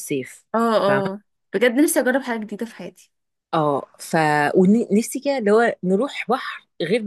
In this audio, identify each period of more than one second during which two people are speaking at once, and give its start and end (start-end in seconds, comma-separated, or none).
none